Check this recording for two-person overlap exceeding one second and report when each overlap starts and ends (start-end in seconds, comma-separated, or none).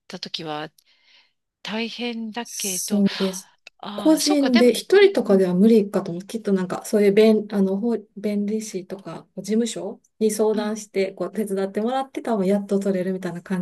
4.0-5.5